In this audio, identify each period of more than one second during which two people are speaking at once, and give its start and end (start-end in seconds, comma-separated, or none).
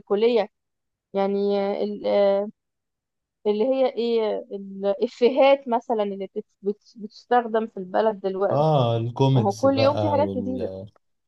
9.3-10.7